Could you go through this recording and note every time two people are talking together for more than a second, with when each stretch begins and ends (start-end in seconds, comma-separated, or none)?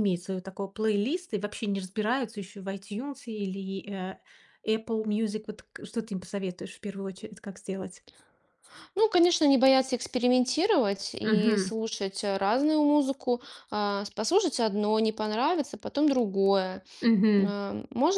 none